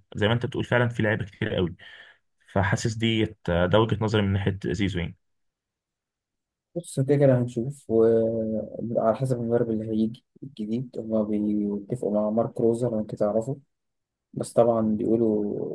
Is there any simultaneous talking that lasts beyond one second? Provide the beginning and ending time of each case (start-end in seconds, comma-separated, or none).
none